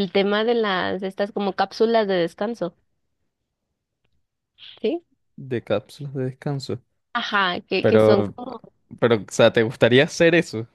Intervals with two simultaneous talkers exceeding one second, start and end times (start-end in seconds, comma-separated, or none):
none